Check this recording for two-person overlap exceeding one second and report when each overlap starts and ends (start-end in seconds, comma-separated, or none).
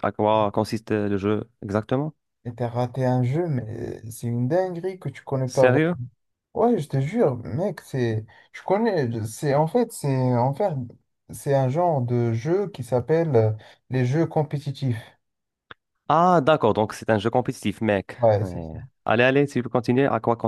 none